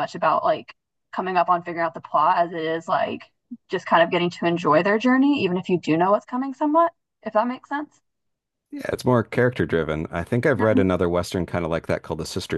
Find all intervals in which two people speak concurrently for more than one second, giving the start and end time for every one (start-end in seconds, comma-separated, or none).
none